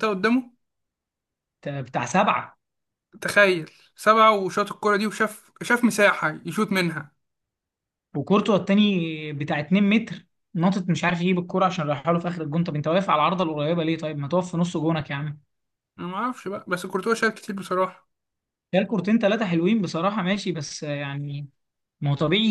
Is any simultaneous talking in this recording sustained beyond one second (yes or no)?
no